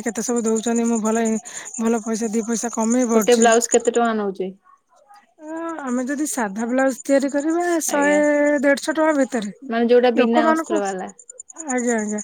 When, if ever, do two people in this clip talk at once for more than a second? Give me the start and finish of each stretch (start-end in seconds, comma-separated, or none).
none